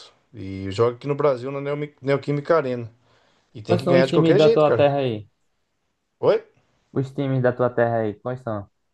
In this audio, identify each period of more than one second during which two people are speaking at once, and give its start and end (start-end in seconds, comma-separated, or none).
3.7-4.9